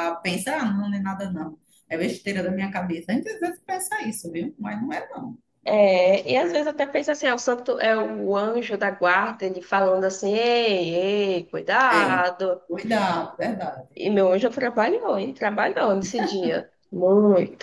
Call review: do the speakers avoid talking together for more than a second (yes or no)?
yes